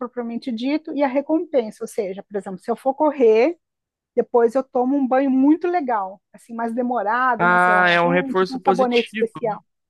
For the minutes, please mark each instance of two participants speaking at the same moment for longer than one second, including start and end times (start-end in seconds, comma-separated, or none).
7.4-9.3